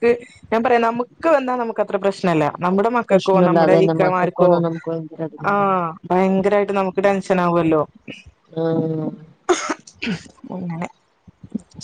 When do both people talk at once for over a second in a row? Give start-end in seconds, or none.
3.1-4.5